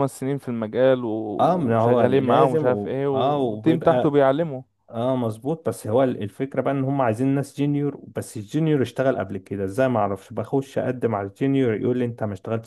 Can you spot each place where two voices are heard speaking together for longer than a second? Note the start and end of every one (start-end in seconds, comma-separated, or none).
1.4-4.2